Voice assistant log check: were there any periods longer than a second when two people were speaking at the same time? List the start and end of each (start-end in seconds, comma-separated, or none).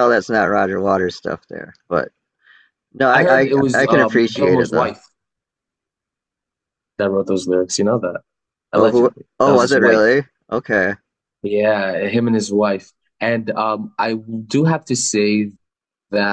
3.1-4.9, 8.8-10.2